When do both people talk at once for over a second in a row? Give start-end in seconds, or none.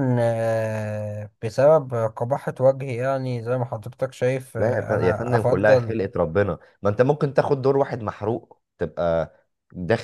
4.6-6.0